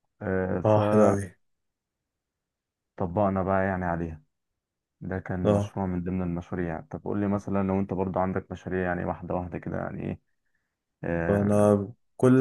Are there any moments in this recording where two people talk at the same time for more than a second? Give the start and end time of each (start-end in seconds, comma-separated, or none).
none